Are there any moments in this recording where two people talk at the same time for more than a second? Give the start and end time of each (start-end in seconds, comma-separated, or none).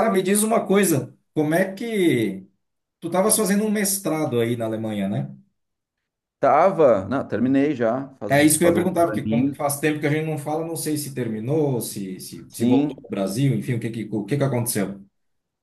8.3-9.6